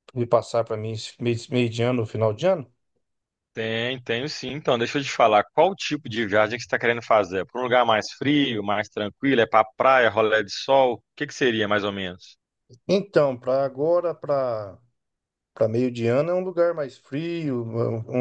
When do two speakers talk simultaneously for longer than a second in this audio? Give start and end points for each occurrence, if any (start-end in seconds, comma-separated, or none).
none